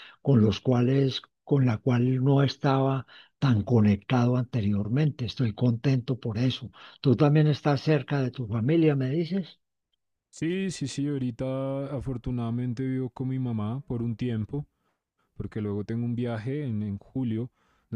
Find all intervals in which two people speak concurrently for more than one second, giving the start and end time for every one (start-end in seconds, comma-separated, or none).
none